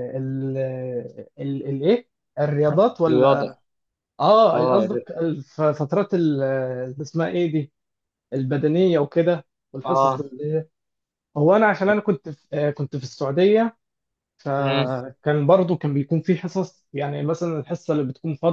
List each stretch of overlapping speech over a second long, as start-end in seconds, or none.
none